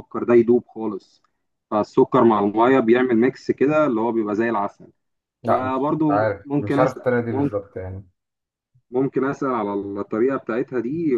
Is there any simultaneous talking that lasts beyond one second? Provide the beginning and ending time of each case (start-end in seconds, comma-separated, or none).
5.5-7.5